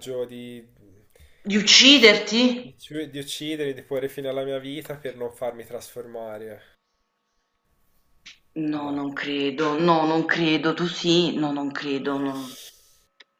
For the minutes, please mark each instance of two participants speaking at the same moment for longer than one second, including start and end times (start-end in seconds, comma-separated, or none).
none